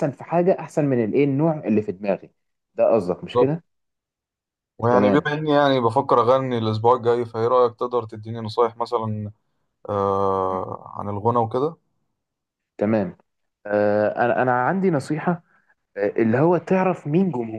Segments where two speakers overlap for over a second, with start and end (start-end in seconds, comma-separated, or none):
none